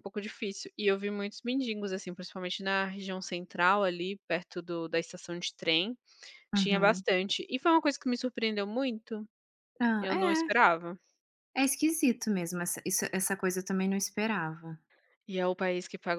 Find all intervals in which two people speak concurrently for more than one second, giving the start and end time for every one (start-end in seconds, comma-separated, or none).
none